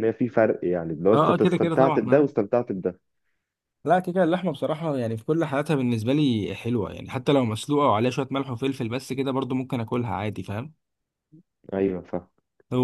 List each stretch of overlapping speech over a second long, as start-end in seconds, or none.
1.1-2.3